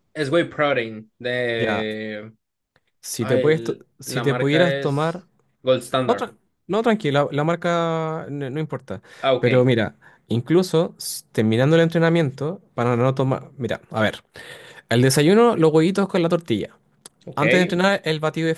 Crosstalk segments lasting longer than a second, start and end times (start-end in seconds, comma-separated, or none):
3.2-5.2